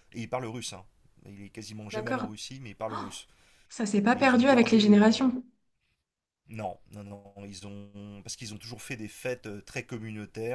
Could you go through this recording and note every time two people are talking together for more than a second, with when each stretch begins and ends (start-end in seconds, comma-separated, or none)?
4.1-5.3